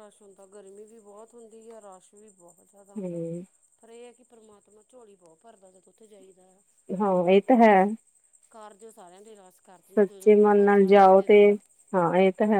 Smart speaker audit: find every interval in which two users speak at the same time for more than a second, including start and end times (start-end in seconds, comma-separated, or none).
9.9-11.4